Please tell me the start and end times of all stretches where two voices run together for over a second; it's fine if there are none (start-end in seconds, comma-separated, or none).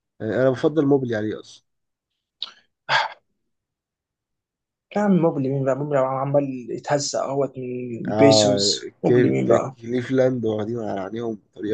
8.1-9.8